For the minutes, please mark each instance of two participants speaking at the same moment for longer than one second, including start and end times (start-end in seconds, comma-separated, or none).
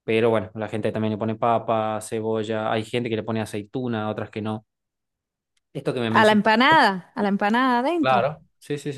none